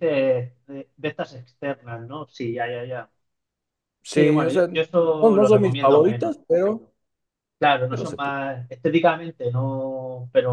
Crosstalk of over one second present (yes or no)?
yes